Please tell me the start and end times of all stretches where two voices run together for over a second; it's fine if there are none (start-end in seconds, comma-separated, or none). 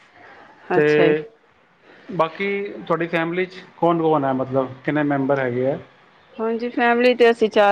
none